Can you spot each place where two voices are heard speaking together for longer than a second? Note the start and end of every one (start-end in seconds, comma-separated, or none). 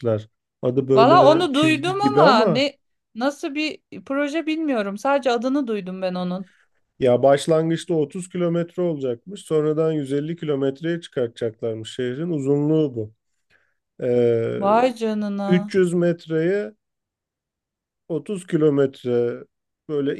0.9-2.6